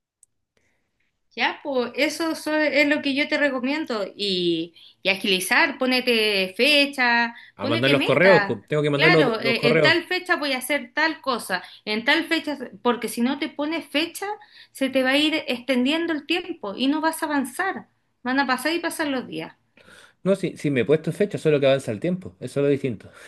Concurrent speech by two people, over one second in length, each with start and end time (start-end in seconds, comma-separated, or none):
7.6-10.0